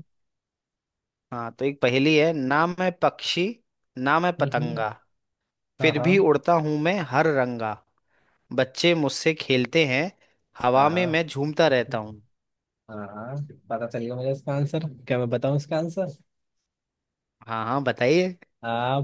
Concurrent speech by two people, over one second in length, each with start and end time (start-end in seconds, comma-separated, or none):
none